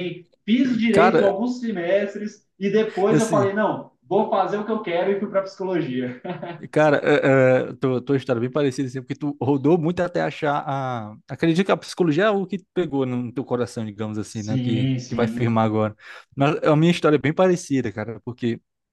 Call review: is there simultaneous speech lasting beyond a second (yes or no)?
yes